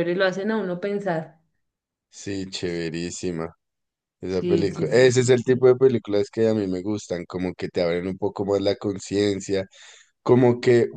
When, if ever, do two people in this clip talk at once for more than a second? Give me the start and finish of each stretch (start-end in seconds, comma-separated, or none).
4.3-5.7